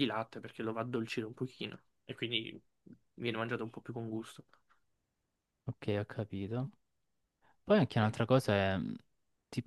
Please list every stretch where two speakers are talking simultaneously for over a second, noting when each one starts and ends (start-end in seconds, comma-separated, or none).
none